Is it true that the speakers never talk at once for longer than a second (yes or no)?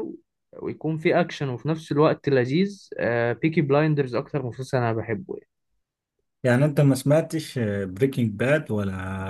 yes